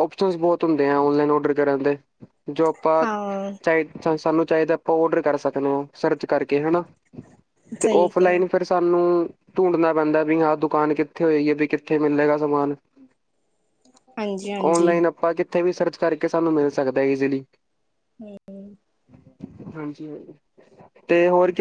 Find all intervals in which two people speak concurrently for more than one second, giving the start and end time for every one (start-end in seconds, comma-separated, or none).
none